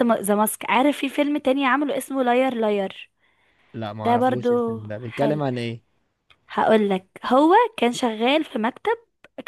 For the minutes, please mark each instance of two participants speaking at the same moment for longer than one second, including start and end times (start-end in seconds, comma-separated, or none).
4.0-5.4